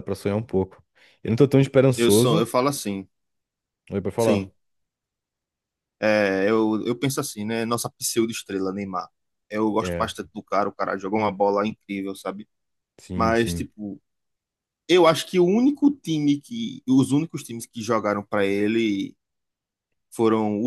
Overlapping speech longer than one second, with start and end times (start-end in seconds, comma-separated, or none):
none